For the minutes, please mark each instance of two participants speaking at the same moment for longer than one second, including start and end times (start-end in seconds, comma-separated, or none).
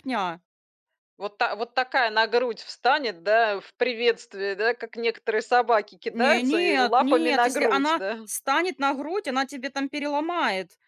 6.1-8.2